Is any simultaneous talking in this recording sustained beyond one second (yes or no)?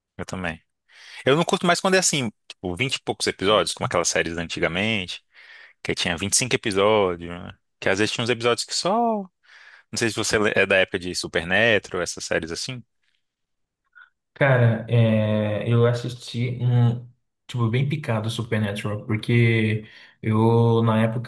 no